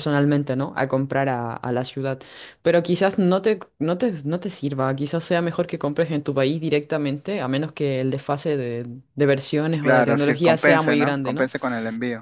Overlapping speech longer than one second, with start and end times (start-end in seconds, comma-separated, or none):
9.8-11.5